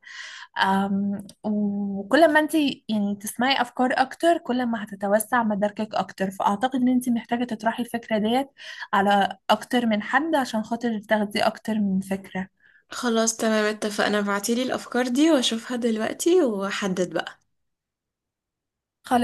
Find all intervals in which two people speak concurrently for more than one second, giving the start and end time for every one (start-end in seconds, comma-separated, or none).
none